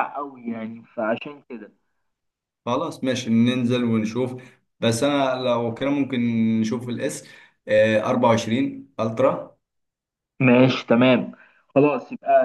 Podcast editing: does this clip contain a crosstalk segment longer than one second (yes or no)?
no